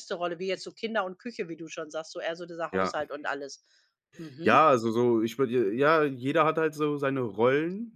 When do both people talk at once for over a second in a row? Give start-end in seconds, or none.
none